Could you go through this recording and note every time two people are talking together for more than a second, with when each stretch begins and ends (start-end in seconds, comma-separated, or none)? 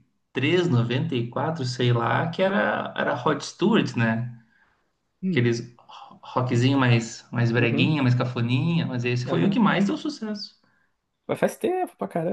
none